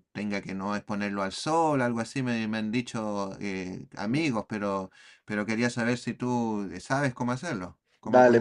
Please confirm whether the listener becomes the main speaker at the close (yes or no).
yes